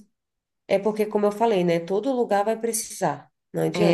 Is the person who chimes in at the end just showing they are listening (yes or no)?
no